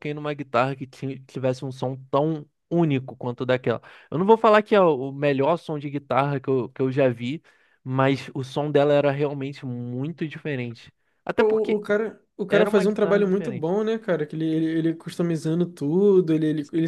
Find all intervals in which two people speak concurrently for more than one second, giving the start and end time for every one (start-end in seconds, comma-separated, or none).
12.5-13.7